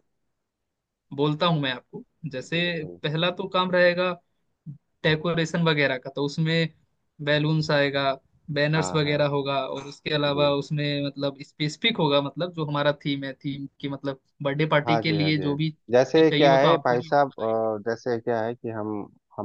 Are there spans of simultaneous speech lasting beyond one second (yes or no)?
yes